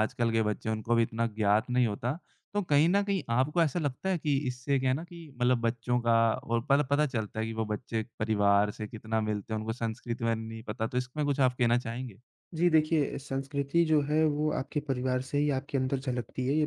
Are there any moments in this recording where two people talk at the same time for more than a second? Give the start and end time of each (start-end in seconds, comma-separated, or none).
none